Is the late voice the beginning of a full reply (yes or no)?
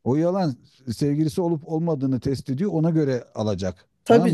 no